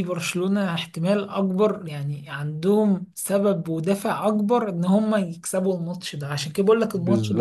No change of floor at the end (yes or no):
no